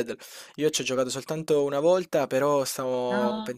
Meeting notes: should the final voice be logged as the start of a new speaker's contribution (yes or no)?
no